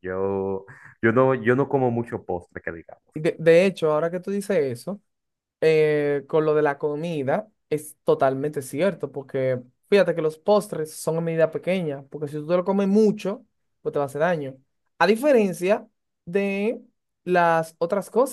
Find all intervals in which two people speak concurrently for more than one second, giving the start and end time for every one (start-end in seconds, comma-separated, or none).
none